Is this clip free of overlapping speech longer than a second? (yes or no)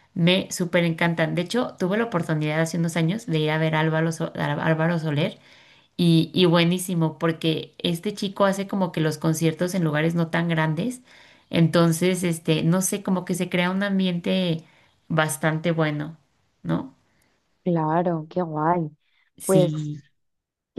yes